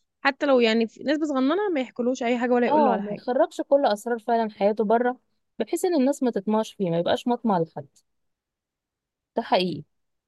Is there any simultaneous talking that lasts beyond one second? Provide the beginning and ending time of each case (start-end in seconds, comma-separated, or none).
none